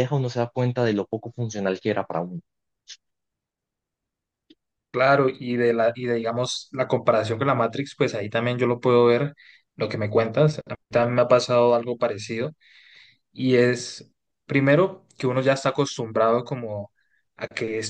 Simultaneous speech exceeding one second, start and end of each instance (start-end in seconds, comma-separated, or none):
none